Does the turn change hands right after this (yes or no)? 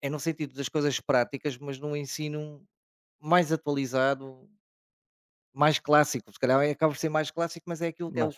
no